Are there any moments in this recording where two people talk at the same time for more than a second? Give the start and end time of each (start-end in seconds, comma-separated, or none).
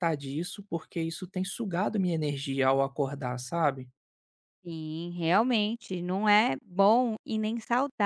none